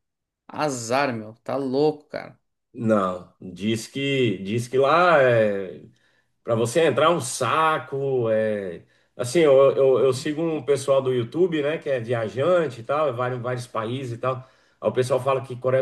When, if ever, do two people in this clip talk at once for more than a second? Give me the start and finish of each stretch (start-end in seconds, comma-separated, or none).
none